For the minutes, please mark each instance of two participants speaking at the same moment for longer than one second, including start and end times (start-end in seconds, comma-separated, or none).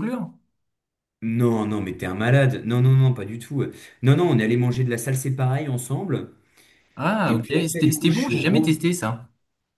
7.2-8.8